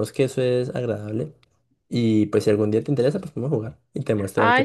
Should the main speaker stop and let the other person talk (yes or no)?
yes